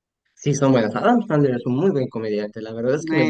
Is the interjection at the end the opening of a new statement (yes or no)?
yes